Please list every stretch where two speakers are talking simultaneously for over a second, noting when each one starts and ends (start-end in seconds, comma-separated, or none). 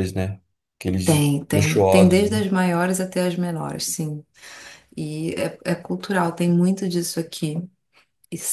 1.0-2.4